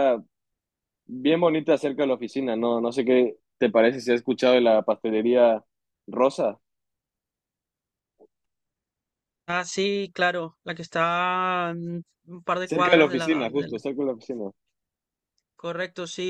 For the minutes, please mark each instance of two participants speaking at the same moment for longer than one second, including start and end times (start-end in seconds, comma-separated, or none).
12.6-13.8